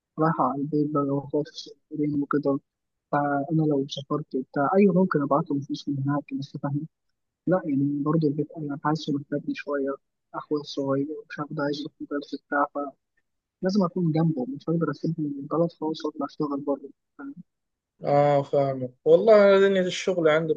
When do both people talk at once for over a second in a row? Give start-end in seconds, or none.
none